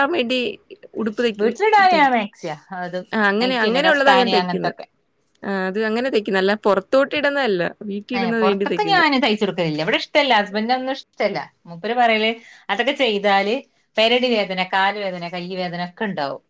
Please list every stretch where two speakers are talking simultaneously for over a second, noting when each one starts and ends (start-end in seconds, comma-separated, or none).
3.4-4.8